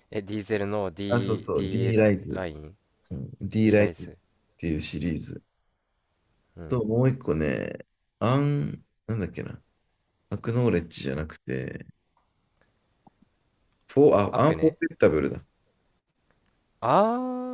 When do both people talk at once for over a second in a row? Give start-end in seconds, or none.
1.1-2.4